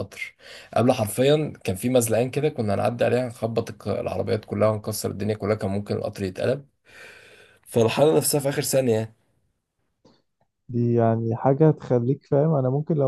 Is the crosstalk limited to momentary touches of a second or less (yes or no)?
yes